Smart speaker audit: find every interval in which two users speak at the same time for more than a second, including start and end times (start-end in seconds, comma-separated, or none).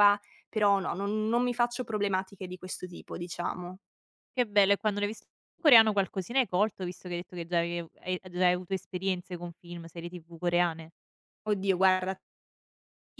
none